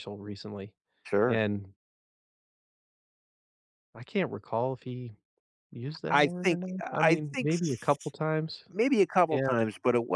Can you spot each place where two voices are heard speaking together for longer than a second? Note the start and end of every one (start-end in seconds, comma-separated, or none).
6.1-8.1